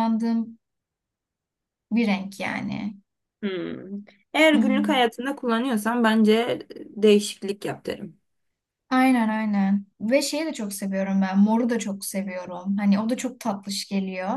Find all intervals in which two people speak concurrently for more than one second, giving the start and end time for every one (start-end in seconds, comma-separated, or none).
none